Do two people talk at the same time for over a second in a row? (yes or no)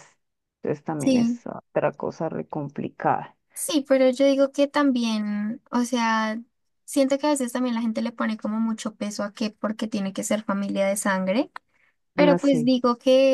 no